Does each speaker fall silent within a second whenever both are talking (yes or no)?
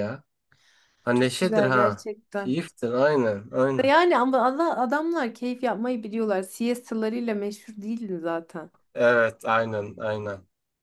no